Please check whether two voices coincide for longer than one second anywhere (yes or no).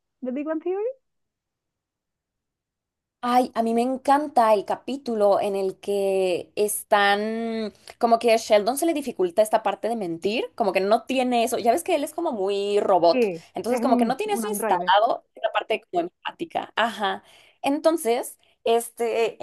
yes